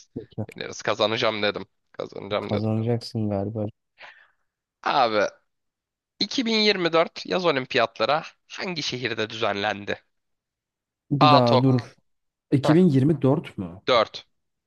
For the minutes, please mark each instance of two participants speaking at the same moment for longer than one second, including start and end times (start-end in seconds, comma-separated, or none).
none